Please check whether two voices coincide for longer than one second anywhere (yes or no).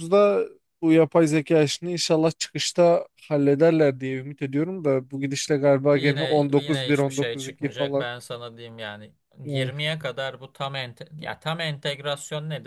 yes